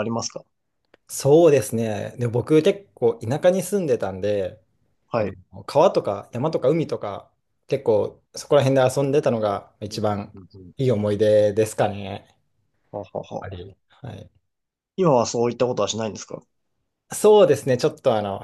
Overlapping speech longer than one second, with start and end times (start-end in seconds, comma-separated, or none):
none